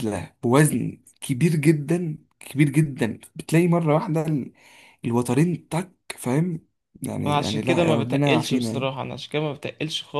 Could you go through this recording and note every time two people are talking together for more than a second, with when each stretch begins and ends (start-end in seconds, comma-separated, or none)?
7.2-8.9